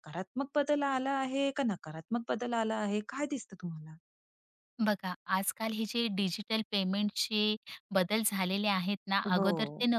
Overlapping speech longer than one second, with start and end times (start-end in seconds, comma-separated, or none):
none